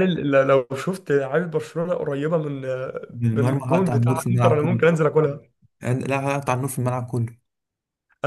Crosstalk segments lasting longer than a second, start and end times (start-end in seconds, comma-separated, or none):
3.3-4.8